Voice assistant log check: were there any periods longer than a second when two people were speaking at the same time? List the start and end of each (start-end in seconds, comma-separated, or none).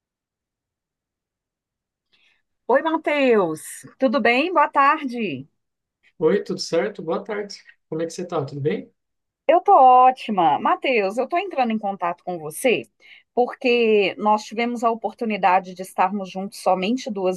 none